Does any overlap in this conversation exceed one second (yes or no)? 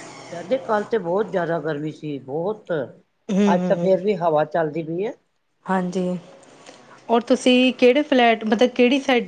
no